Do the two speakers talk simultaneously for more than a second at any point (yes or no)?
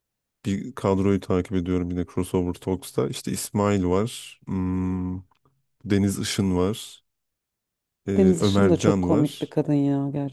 yes